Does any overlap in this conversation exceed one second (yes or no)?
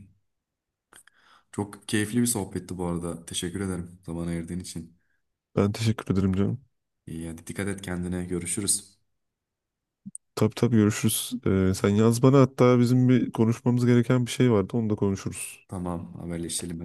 no